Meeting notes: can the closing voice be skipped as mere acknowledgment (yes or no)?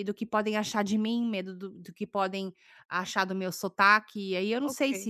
no